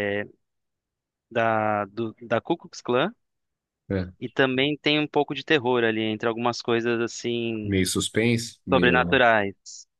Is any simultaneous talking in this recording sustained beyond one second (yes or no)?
no